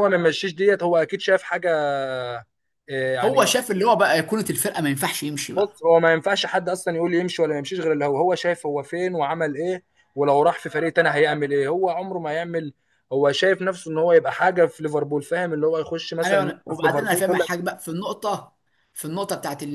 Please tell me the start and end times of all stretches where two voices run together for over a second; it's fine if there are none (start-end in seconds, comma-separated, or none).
16.2-17.5